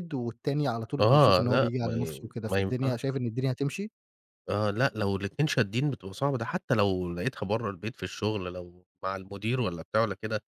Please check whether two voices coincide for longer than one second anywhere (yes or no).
yes